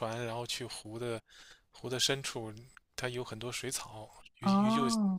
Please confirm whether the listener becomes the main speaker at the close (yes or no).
no